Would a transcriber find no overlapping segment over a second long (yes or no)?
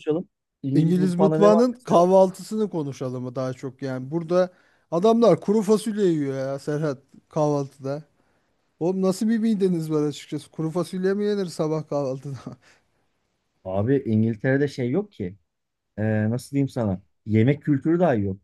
no